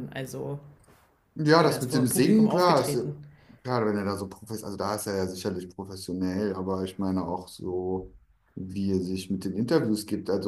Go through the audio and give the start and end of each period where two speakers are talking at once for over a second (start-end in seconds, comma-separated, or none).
1.6-3.0